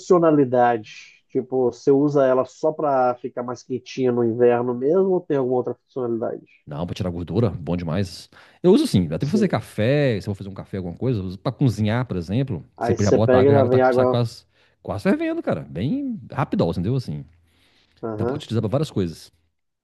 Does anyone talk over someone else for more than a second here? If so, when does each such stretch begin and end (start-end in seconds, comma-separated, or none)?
12.8-14.2